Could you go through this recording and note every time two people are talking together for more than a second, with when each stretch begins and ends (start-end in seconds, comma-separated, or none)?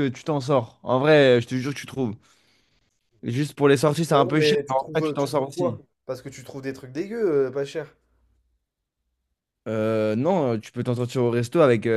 4.1-5.8